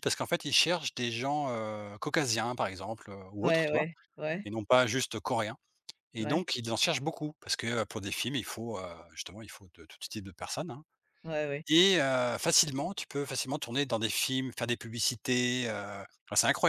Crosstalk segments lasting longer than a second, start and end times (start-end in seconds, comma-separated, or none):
none